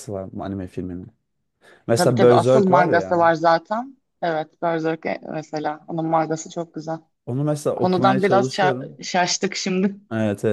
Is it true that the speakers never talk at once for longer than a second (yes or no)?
no